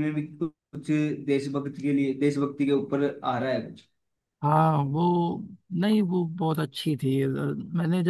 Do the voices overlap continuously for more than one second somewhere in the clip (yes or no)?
no